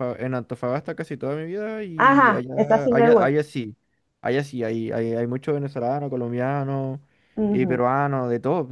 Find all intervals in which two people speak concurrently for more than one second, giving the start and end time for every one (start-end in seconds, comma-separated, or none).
1.9-3.3